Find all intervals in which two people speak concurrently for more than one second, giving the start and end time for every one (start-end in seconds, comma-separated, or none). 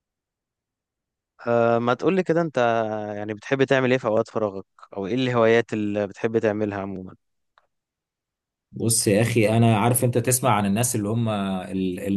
none